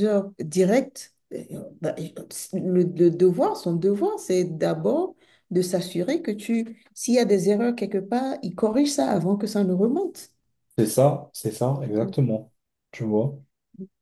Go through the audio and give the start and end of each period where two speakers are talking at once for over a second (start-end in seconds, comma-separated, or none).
none